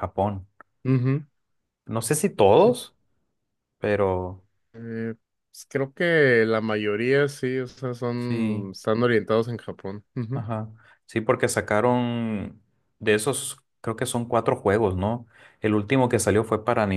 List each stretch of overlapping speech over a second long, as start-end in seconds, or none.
none